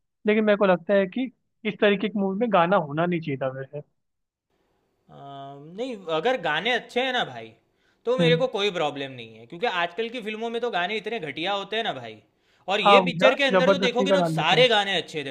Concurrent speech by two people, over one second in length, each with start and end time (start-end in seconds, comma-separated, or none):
12.8-14.7